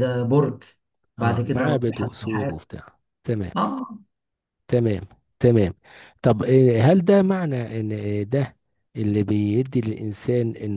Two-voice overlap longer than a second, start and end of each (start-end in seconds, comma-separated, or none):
1.2-2.6